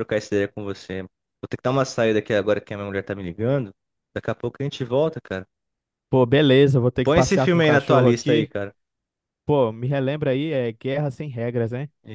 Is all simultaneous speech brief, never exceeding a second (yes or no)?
no